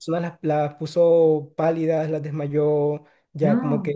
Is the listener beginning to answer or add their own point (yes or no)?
no